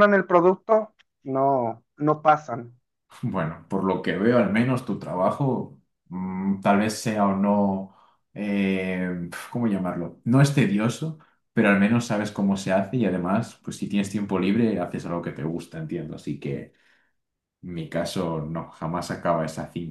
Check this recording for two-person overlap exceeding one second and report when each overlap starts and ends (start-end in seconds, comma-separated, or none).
none